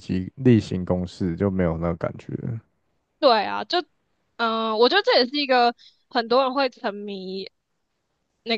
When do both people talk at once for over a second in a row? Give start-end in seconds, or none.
none